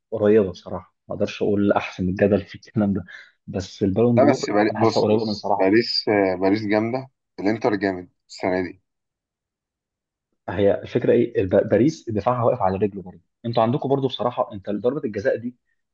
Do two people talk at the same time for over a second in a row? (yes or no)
yes